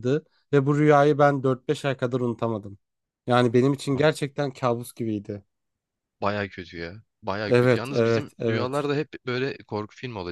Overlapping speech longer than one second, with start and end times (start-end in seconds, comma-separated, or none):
7.5-8.7